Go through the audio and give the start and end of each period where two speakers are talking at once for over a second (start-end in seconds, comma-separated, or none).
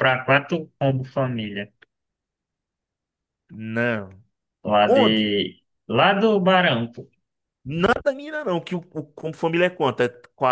none